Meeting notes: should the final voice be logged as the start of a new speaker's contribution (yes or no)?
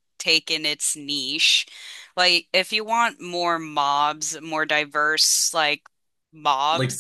no